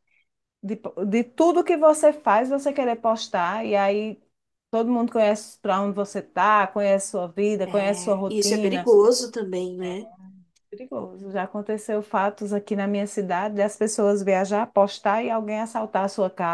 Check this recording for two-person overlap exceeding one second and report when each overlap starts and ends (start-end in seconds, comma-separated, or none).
7.6-9.0